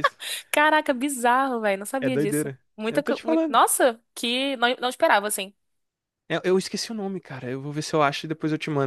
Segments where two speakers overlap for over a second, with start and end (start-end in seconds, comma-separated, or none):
2.0-3.6